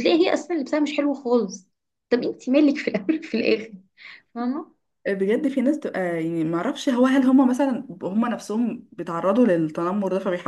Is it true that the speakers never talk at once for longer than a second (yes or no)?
yes